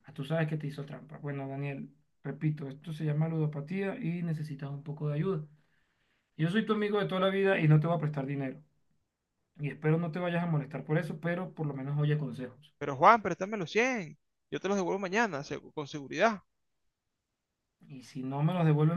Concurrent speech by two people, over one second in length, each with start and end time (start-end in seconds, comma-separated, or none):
none